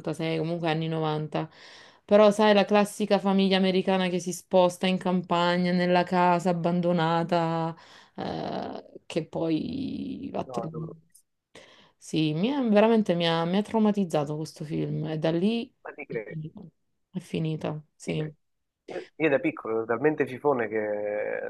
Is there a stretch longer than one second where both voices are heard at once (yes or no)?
no